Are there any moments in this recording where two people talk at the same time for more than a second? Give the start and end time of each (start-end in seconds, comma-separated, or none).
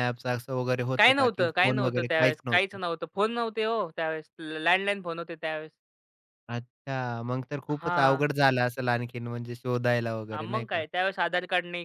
1.0-2.8